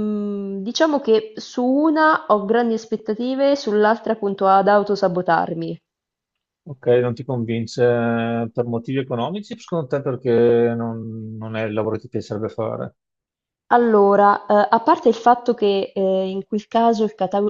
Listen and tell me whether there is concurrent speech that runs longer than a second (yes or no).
no